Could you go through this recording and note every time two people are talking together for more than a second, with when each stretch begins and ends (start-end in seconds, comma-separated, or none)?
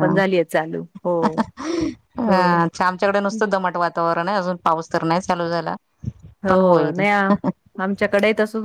none